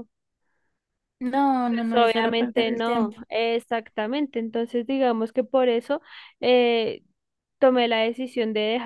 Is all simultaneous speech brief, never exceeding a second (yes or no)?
no